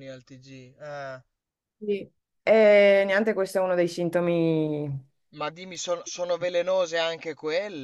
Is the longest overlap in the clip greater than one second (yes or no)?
no